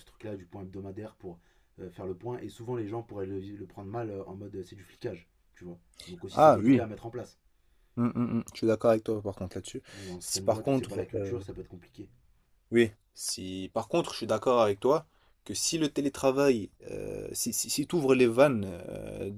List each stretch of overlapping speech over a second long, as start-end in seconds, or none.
10.2-11.4